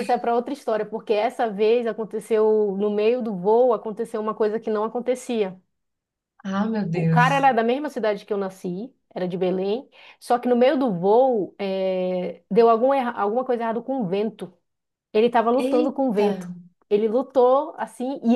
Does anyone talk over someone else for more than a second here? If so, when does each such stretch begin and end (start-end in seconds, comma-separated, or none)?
none